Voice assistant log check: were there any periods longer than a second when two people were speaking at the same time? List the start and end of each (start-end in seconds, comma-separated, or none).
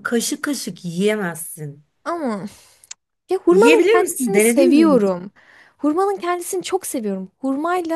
3.5-5.1